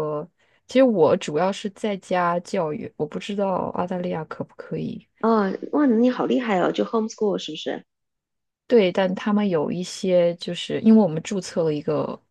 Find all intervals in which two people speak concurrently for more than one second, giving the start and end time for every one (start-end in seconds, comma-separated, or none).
none